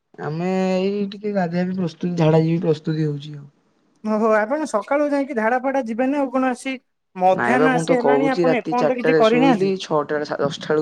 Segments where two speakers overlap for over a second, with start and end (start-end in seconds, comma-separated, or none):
7.4-9.7